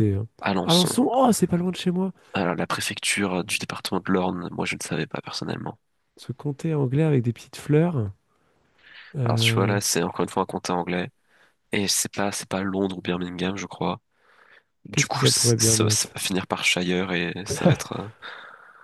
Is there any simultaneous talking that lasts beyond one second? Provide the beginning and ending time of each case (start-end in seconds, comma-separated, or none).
14.9-16.2